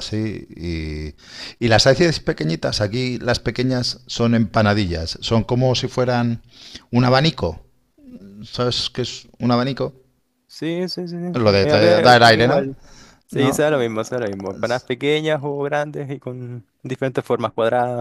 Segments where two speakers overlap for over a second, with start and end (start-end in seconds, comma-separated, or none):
11.3-12.6